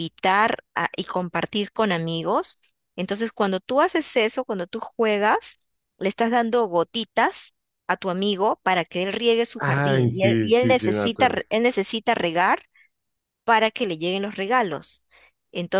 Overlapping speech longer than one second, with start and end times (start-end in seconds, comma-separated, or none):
9.6-11.4